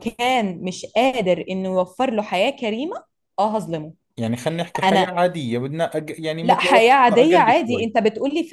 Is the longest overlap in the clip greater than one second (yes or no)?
yes